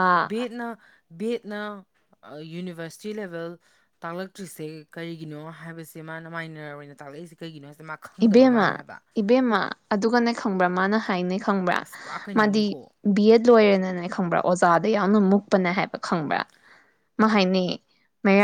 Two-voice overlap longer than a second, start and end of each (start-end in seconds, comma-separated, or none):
none